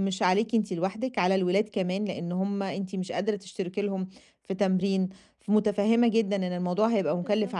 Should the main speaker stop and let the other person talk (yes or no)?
no